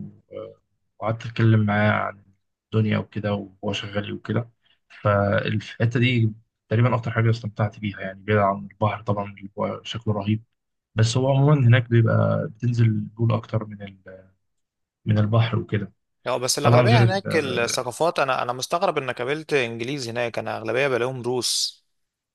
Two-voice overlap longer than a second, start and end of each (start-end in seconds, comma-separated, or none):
none